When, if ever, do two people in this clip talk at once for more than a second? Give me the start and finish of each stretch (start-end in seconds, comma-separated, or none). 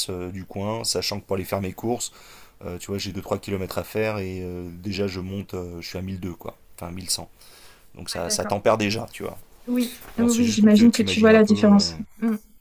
10.2-11.9